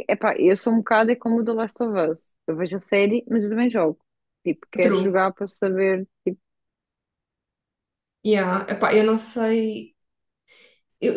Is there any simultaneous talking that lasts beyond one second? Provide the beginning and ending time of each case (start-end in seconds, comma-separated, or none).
none